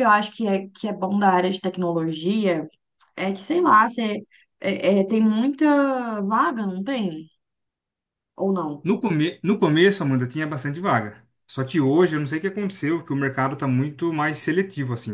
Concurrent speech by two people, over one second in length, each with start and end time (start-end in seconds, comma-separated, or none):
none